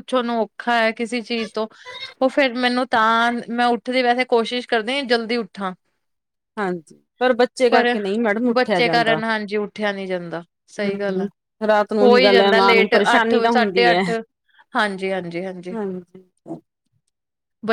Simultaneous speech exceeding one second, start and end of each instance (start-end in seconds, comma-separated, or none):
12.0-14.0